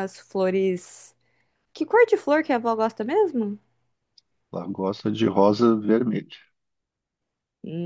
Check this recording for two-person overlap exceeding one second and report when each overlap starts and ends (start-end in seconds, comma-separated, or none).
none